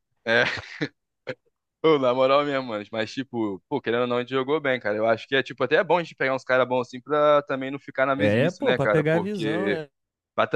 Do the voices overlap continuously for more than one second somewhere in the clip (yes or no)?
yes